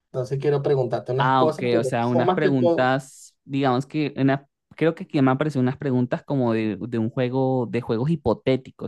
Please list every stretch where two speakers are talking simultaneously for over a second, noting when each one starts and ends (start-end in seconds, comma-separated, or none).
1.2-2.9